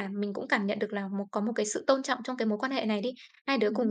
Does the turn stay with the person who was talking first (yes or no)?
yes